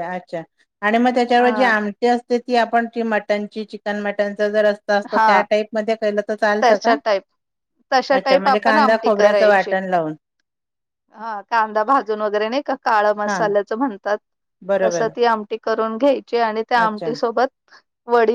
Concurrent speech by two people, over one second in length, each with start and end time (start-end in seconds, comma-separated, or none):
8.2-9.7